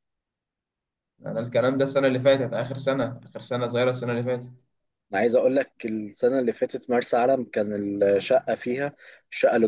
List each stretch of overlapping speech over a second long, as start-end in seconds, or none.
none